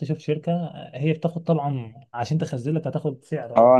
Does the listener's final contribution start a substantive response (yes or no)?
yes